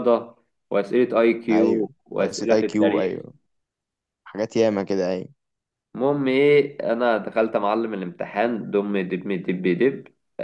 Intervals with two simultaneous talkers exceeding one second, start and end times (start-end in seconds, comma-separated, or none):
1.5-3.2